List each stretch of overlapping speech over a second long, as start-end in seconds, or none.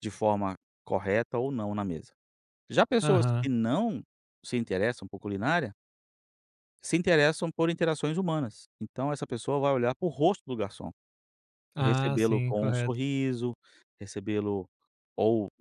11.8-13.0